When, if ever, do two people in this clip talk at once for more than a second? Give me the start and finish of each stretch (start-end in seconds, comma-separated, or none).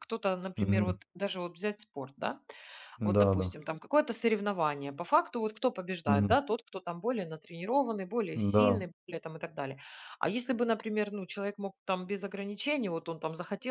none